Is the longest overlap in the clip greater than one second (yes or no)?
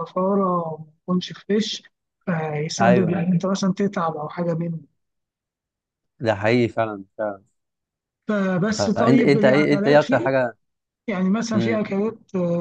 yes